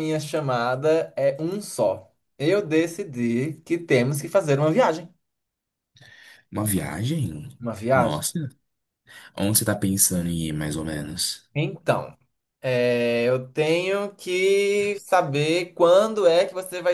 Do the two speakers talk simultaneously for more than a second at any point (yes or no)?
no